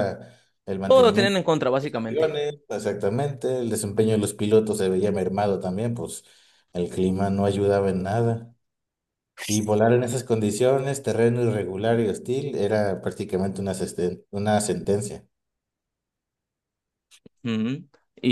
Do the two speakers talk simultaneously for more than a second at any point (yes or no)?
yes